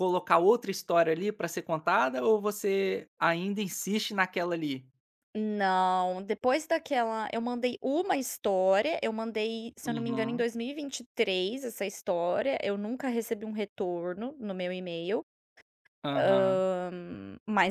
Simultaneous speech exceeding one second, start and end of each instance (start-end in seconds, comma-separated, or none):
none